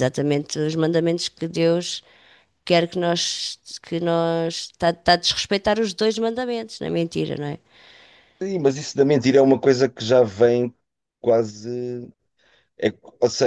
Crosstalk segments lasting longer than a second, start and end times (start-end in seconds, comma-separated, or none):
none